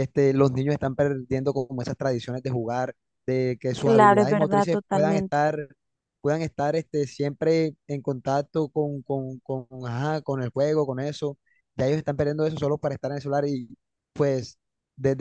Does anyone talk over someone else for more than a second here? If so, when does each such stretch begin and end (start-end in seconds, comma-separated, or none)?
3.8-5.4